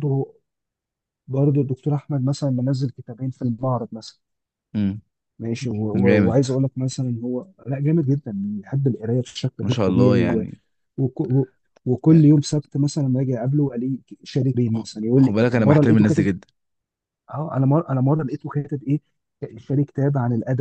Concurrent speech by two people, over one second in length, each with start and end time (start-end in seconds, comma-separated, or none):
14.7-16.3